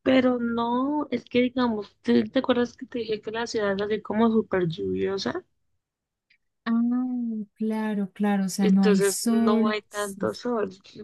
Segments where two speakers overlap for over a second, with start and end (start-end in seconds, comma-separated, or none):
8.6-10.4